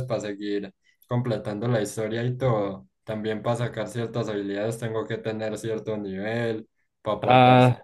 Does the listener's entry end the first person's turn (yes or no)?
no